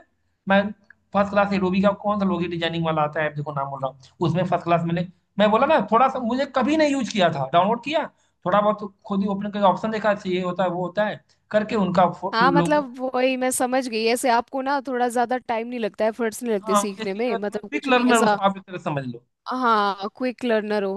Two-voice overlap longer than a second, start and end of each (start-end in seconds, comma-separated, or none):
16.6-18.4